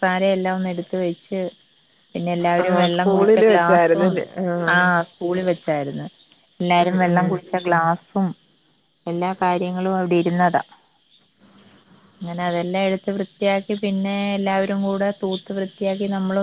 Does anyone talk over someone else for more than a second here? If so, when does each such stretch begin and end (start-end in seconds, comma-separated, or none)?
2.6-4.1